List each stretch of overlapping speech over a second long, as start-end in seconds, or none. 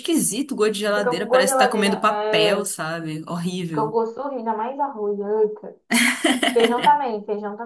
0.9-2.7